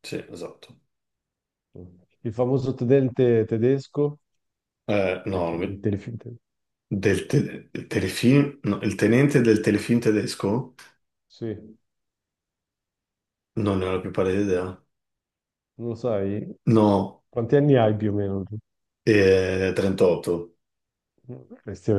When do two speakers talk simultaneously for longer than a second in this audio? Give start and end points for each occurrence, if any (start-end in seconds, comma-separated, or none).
none